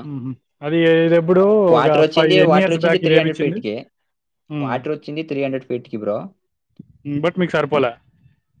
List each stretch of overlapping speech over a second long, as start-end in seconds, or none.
1.8-3.6